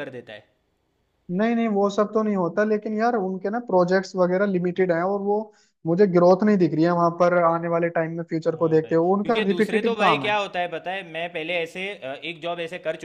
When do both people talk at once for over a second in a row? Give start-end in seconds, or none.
8.5-10.3